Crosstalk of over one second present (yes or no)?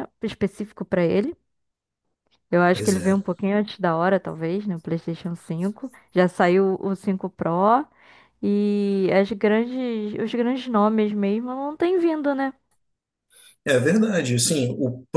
no